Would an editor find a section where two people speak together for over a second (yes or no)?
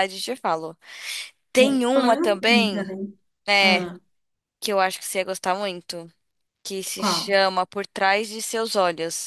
yes